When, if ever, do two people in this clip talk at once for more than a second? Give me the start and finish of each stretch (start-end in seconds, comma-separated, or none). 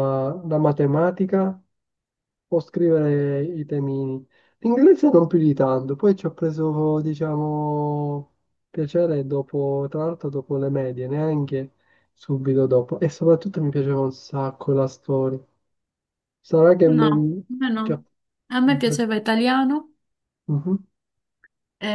none